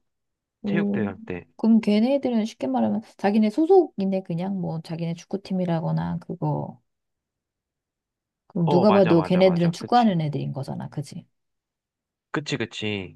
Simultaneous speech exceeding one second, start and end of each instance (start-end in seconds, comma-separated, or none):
8.7-10.1